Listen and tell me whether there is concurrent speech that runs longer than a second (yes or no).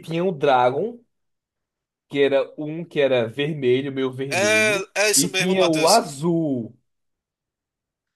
yes